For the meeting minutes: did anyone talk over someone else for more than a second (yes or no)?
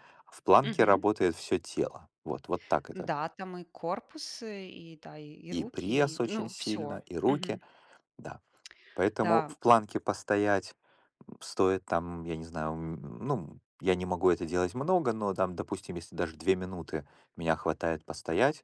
yes